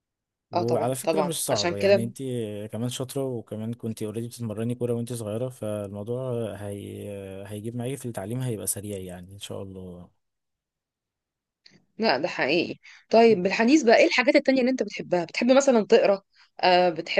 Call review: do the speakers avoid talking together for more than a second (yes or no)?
no